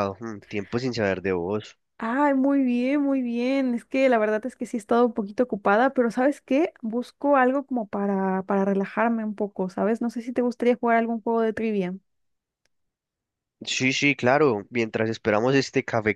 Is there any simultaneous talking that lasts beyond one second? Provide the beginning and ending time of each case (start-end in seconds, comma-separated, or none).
none